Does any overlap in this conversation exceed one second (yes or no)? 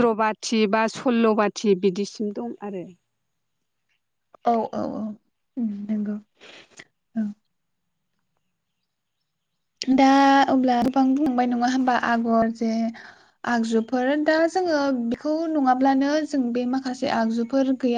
no